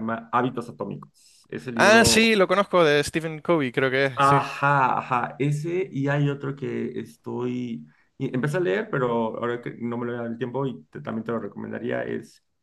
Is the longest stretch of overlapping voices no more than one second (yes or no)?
yes